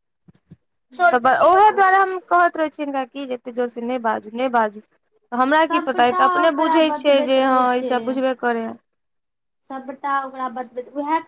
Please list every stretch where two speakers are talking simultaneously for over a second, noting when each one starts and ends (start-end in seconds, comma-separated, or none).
5.7-8.2